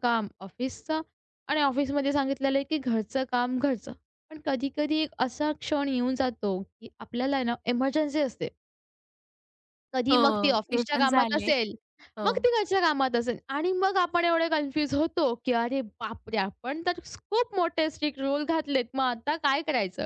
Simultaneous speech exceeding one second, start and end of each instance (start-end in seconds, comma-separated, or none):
10.1-11.5